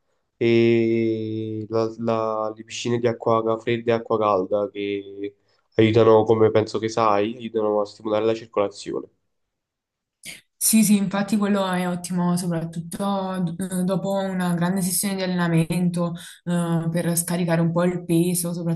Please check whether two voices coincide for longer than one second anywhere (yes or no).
no